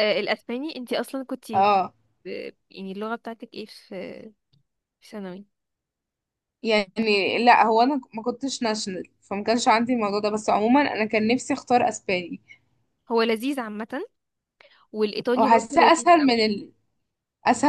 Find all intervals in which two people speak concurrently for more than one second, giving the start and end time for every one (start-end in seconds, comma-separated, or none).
15.3-16.6